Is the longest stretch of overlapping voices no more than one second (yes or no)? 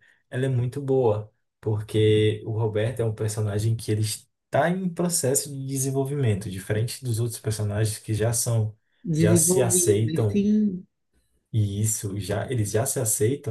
no